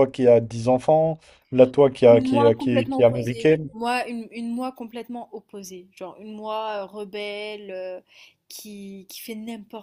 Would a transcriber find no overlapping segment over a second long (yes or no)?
no